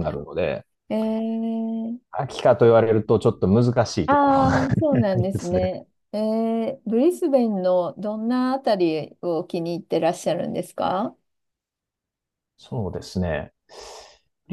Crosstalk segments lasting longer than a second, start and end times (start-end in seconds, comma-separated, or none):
4.1-5.7